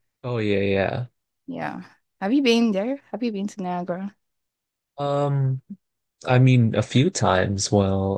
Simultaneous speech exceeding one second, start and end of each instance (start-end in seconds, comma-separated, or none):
none